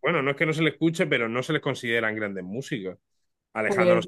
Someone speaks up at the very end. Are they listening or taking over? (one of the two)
listening